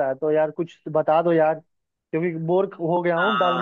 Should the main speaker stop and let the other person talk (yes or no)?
no